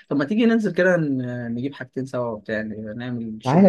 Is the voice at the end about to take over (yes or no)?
yes